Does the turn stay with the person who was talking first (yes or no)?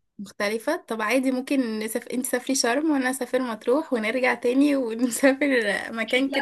no